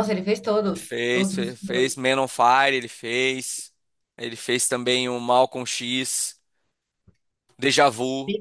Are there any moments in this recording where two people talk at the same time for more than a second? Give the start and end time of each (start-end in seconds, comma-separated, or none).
0.7-2.0